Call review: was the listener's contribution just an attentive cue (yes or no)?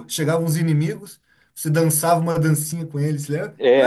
no